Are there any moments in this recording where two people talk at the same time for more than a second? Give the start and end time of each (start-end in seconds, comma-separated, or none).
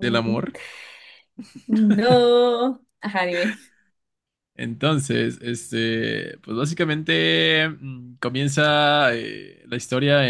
none